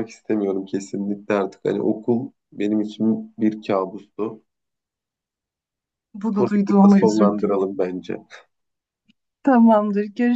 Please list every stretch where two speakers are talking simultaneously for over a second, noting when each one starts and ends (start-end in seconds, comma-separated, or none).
6.3-7.5